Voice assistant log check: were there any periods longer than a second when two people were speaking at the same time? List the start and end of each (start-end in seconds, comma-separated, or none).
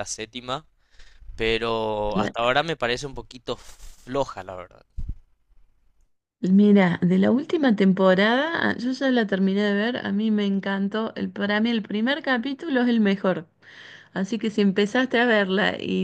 none